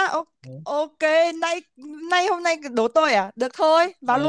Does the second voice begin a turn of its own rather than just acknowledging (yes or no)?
yes